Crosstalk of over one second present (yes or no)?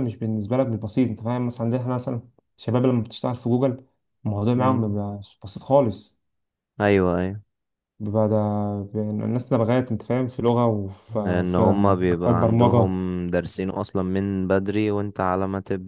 yes